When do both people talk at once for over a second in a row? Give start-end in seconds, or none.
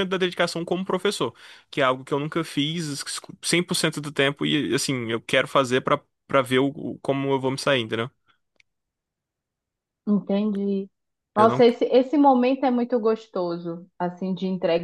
none